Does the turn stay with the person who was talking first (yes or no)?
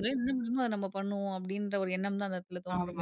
no